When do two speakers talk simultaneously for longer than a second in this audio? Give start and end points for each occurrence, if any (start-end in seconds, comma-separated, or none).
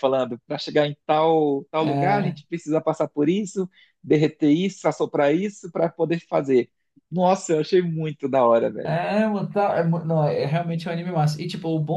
none